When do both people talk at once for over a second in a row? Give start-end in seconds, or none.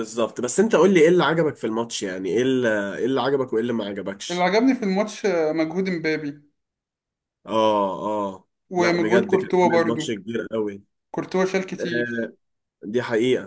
8.7-10.0